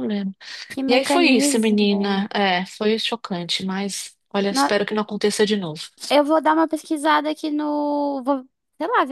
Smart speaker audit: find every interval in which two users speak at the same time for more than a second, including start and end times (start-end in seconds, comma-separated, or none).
0.9-2.2